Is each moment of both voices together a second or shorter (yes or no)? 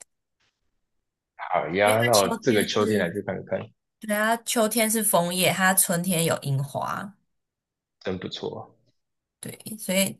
no